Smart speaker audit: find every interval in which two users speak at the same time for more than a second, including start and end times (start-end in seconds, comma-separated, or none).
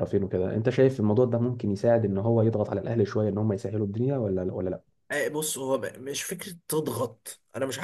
none